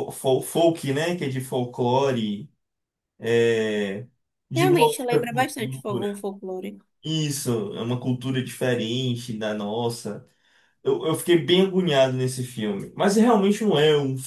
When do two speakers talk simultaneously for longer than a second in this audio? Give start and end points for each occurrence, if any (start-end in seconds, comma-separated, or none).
4.5-6.2